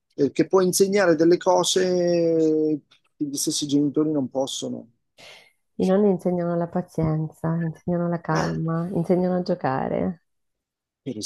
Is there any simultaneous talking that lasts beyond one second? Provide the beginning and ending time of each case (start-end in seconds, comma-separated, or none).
none